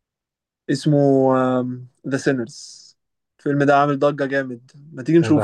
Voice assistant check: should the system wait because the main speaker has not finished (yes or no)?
yes